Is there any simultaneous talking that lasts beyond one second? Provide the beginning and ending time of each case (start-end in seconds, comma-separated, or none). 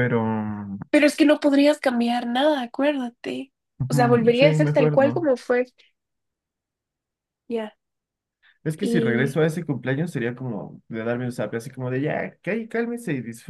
3.9-5.3